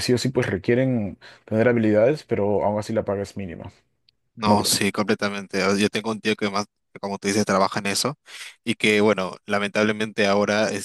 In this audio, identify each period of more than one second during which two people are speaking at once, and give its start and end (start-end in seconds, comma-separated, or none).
none